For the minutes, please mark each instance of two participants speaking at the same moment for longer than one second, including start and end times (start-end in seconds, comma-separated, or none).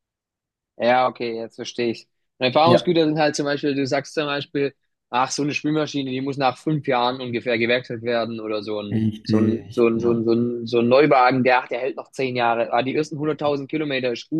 8.9-10.3